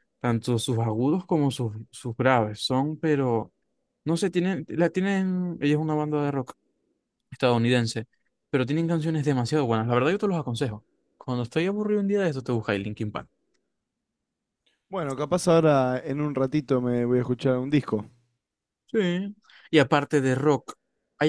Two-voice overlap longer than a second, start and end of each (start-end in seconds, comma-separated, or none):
none